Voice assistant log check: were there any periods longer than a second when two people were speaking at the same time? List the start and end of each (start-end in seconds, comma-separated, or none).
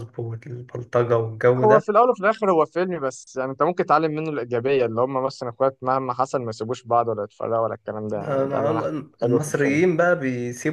8.1-9.8